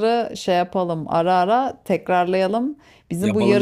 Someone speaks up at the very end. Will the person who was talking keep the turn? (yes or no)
yes